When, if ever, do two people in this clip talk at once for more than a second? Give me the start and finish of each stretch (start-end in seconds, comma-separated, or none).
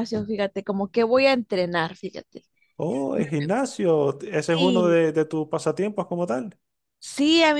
none